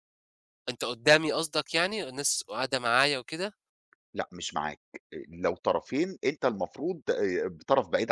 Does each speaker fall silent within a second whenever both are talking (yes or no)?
yes